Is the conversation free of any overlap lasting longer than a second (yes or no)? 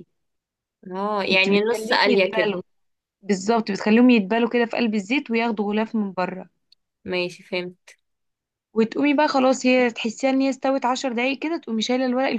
no